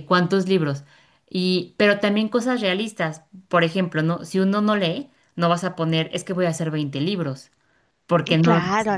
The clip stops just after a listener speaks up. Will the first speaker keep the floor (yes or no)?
no